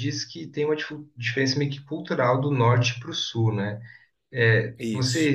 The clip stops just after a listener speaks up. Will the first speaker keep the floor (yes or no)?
yes